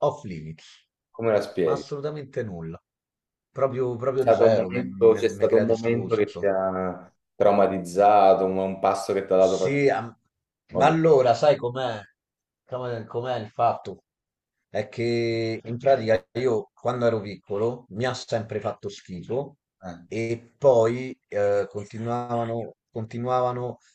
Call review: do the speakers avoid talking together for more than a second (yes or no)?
no